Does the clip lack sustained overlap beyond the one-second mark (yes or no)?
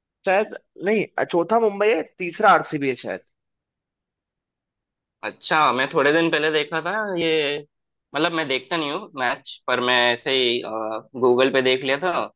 yes